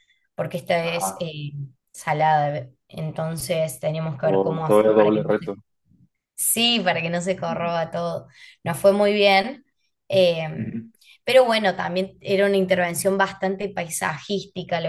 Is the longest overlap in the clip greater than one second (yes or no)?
yes